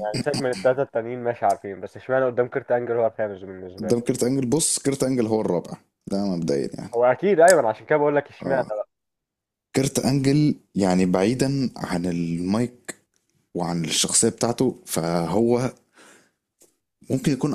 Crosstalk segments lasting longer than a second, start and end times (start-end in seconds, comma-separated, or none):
none